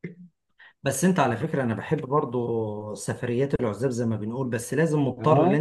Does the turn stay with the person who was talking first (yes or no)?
yes